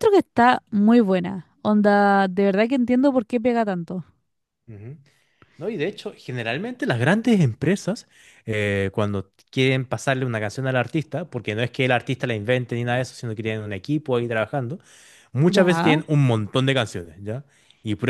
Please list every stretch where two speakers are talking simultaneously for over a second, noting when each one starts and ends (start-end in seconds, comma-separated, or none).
none